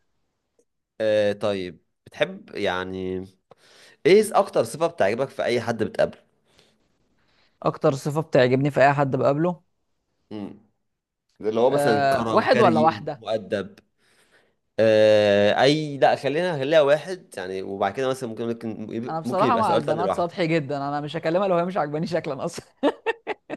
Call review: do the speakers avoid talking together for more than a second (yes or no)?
no